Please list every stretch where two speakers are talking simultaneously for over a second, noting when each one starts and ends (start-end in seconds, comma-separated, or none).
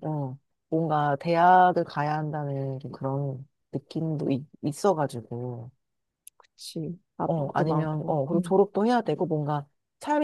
7.2-8.6